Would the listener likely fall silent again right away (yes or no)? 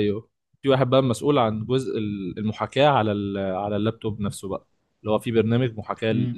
yes